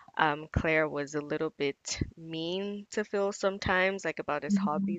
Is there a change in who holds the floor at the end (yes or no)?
no